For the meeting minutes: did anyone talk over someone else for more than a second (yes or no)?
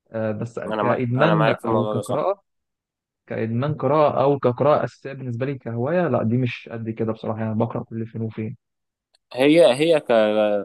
yes